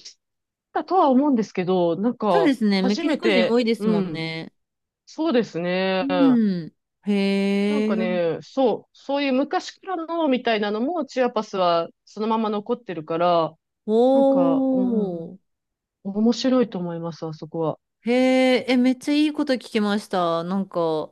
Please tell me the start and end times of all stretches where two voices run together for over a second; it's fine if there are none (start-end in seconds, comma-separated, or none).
2.3-4.3